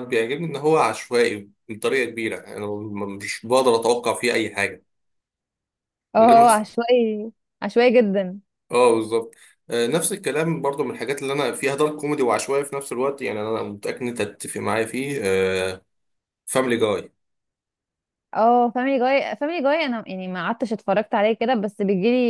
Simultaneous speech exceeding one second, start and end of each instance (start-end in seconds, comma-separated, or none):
none